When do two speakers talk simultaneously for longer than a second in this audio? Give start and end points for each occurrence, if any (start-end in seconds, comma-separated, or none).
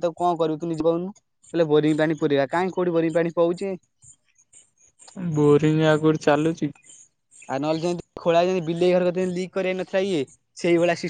none